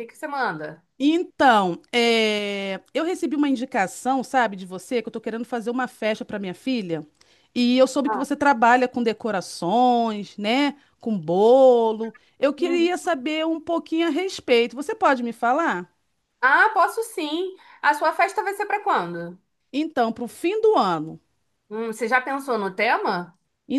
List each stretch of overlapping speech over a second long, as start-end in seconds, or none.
none